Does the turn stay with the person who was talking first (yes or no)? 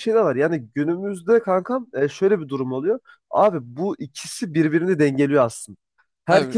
yes